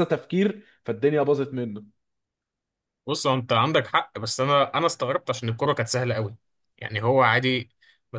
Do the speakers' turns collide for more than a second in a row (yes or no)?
no